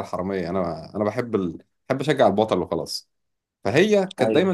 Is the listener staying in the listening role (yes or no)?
yes